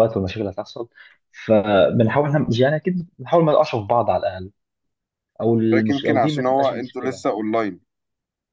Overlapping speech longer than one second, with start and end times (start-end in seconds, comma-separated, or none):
5.9-7.2